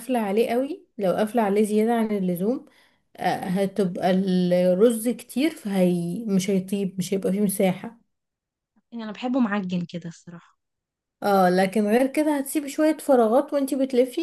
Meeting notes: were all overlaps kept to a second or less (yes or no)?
yes